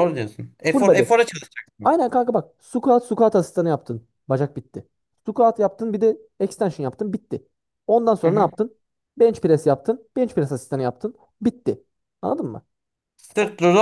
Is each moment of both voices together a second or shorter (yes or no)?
yes